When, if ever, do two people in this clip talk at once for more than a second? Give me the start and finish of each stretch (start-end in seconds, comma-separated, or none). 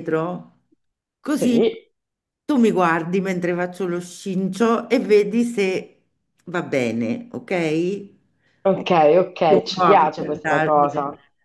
9.5-10.9